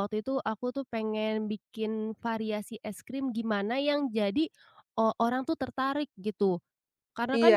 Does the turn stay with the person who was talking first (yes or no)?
no